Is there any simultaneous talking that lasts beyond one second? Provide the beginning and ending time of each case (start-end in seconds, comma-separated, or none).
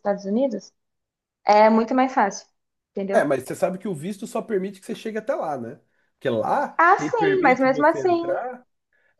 6.8-8.4